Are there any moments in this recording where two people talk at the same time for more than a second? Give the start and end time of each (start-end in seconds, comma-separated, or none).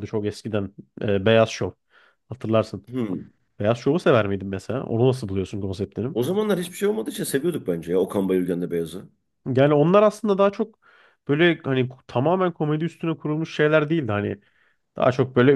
none